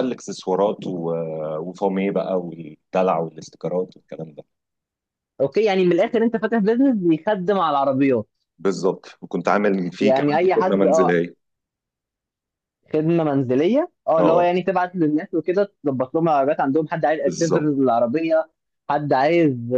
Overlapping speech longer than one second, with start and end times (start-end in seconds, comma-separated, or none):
10.0-11.2